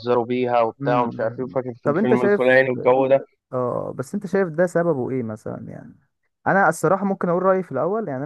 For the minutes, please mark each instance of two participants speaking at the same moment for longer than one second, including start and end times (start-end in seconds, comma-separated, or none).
0.8-2.6